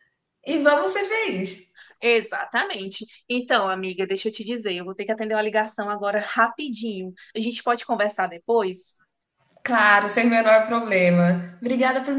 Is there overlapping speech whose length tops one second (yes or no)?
no